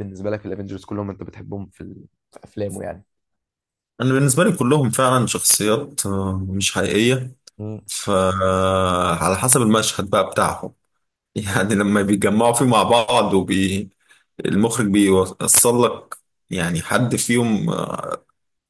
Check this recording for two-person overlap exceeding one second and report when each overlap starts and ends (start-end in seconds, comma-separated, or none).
none